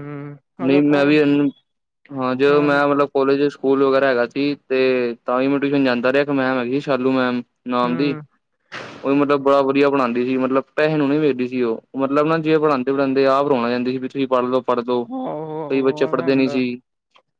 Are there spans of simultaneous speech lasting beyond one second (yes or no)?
yes